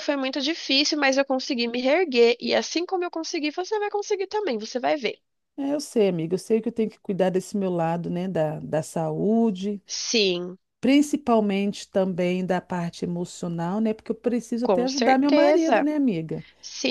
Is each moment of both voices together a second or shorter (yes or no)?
no